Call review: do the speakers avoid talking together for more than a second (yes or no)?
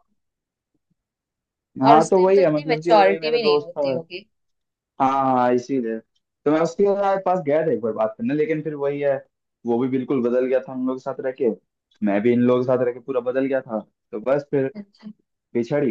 no